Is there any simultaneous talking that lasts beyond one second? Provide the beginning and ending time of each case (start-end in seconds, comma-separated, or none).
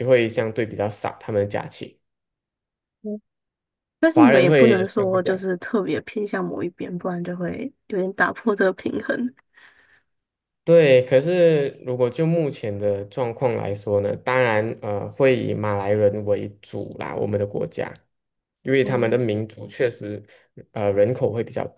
4.1-5.3